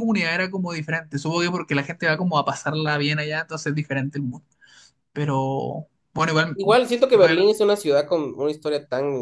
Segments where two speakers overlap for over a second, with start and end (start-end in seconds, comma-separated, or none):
none